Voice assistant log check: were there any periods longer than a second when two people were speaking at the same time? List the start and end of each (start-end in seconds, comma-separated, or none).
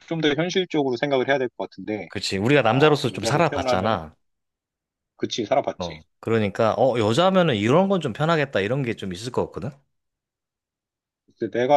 2.5-4.0